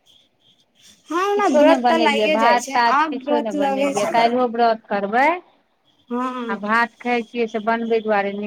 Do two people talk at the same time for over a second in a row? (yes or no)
yes